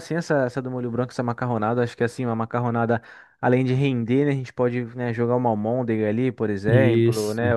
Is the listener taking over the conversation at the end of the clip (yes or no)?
no